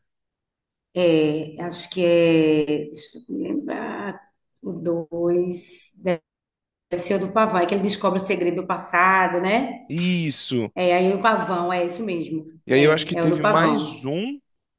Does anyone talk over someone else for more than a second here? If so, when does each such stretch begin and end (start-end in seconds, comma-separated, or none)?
12.7-14.1